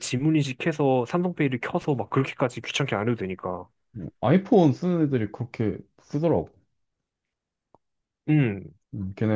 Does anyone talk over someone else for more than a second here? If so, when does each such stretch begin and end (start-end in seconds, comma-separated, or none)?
none